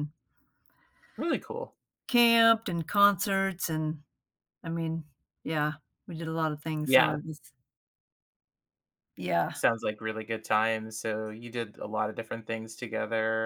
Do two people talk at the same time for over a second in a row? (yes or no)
no